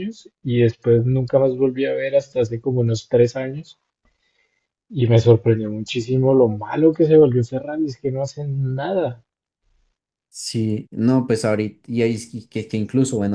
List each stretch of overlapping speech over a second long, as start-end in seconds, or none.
none